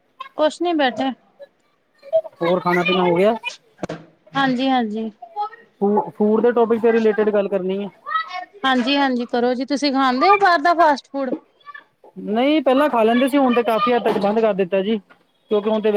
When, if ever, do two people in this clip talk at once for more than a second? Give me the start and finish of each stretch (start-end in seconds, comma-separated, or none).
none